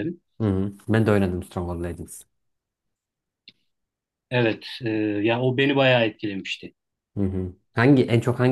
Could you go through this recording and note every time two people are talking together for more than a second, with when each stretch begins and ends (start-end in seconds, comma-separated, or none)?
none